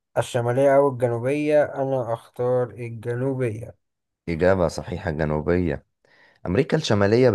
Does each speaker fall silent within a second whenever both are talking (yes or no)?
yes